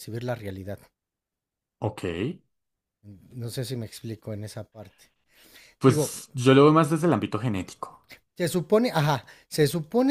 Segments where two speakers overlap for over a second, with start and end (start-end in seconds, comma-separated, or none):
none